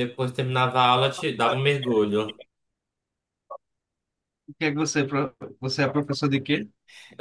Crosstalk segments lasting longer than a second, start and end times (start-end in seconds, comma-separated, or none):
none